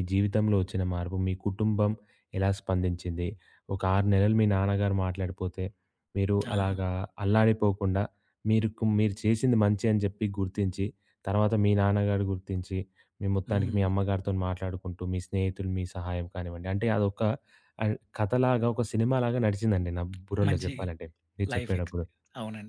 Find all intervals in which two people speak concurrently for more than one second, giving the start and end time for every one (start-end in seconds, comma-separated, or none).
none